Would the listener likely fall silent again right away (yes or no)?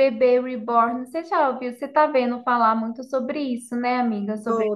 no